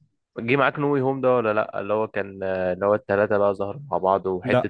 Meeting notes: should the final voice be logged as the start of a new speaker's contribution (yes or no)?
no